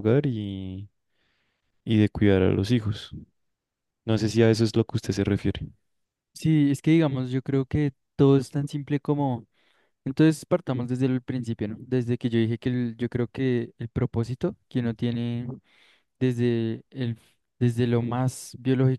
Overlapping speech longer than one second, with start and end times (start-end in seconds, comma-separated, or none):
none